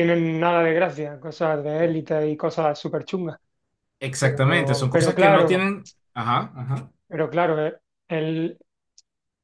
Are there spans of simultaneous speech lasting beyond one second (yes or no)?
yes